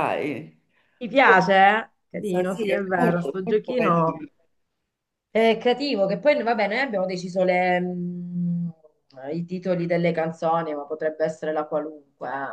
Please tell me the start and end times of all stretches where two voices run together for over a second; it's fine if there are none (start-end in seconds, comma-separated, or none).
2.2-4.2